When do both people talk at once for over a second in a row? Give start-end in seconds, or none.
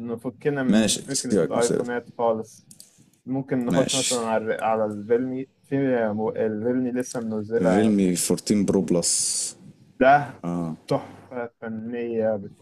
0.7-1.9